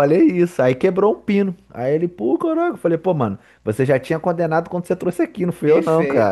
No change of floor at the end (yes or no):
no